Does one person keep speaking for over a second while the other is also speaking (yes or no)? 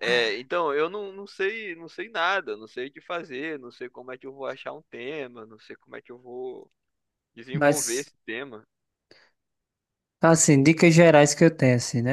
no